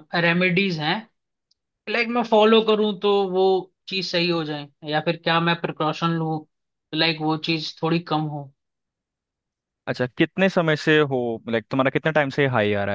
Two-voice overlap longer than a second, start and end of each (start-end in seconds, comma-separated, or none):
none